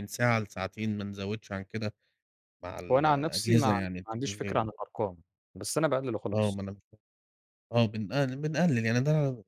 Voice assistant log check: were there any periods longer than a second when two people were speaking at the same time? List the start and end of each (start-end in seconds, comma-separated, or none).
2.9-4.6